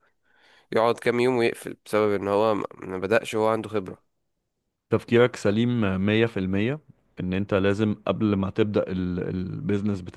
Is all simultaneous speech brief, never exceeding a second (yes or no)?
yes